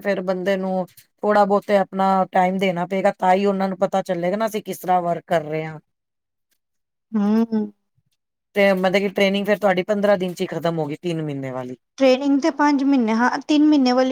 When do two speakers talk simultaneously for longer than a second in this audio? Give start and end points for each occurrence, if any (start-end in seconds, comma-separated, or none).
none